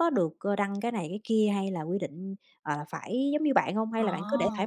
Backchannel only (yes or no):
no